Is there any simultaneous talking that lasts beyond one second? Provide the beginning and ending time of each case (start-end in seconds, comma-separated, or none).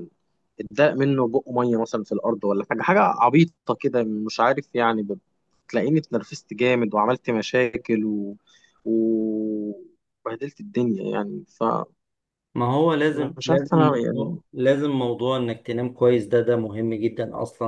13.1-14.4